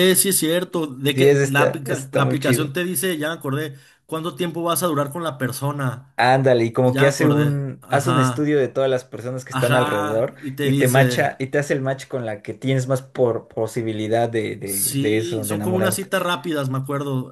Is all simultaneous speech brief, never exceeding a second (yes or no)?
no